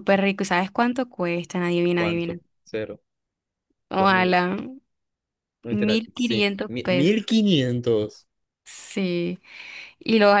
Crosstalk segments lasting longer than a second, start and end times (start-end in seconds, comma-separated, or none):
5.7-7.3